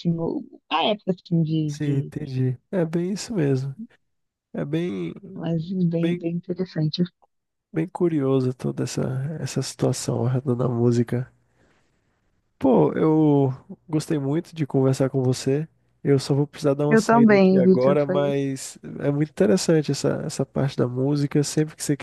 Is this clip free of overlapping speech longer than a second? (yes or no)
no